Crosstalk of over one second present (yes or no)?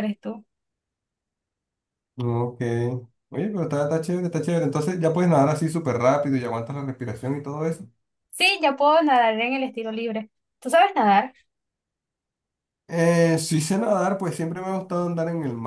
no